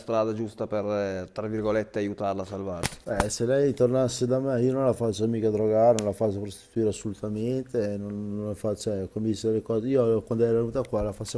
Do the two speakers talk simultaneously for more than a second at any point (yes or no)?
no